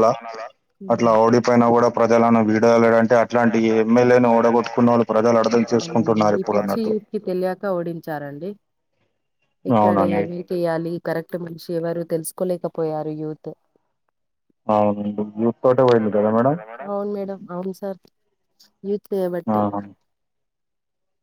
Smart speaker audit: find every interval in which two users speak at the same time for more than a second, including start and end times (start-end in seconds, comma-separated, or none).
none